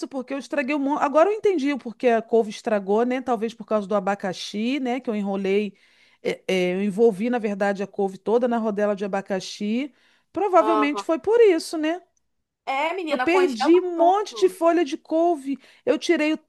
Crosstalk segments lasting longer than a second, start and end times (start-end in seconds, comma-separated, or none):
13.1-14.6